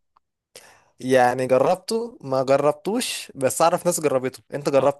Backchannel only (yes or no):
no